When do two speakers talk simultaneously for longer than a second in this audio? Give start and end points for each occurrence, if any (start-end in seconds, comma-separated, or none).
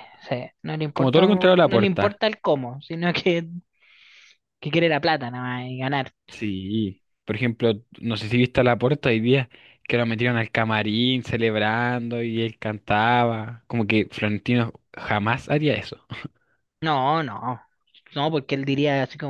0.9-2.2